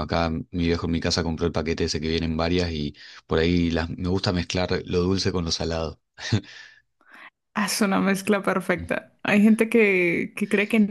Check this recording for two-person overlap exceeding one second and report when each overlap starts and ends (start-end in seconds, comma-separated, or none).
none